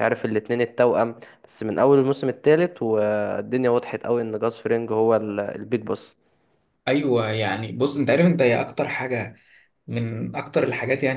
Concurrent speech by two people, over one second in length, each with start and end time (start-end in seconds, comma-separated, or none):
none